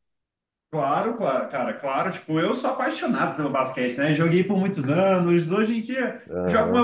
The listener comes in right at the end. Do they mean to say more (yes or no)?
no